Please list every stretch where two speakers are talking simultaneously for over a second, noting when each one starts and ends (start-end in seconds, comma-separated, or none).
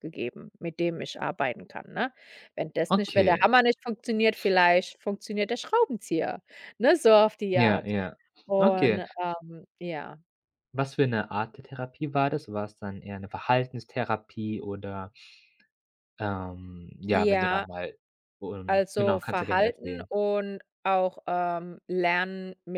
18.7-20.1